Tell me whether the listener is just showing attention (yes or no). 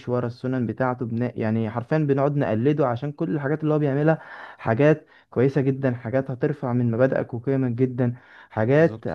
yes